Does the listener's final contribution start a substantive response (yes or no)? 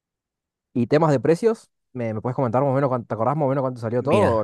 yes